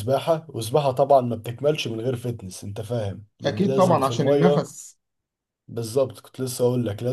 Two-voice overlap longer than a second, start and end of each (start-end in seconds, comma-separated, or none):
3.5-4.7